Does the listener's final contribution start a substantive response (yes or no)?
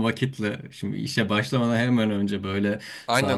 no